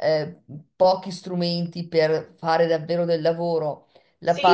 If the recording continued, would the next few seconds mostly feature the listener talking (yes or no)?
yes